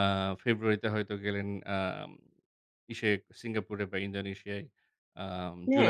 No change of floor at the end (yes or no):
no